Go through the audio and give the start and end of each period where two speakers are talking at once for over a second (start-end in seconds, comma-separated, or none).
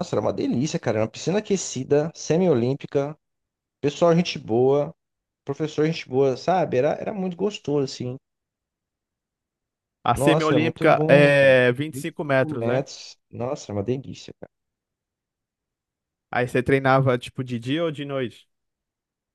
10.1-12.8